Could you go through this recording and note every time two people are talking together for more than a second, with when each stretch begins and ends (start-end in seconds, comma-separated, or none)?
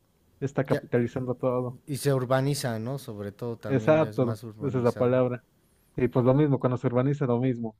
3.6-5.2